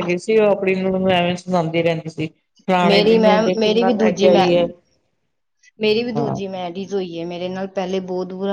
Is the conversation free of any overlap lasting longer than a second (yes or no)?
no